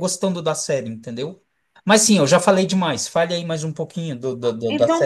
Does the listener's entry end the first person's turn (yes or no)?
yes